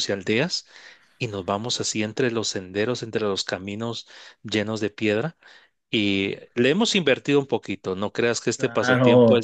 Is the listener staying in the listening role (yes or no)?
no